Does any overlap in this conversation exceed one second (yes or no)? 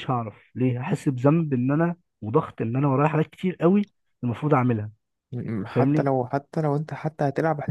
no